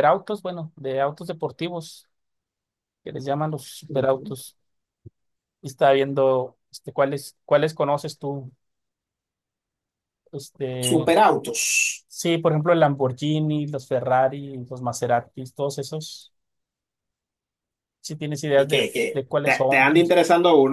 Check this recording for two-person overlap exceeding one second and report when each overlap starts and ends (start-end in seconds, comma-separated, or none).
18.6-20.1